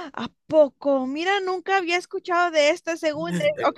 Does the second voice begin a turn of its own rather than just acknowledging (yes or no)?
yes